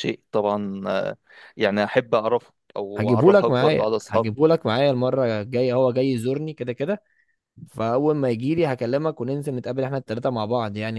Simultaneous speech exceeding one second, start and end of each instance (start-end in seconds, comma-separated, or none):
3.0-4.3